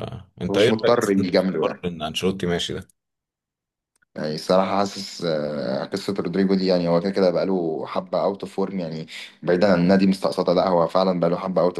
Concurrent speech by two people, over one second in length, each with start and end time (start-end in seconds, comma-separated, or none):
0.5-1.9